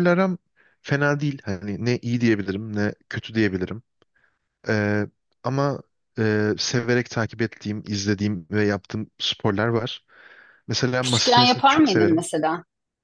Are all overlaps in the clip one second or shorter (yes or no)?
no